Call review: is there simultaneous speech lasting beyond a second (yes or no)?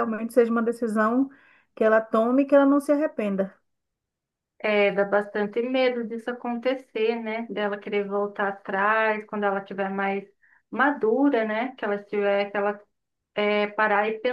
no